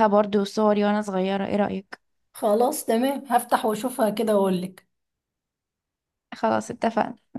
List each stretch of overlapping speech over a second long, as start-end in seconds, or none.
none